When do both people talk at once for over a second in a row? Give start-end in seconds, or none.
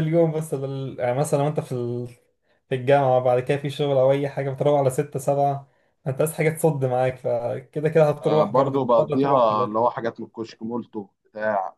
8.2-9.8